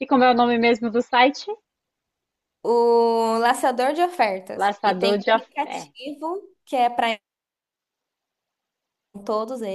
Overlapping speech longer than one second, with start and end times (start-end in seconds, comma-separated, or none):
4.5-6.1